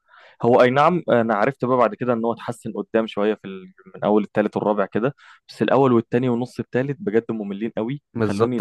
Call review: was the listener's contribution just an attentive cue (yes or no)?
no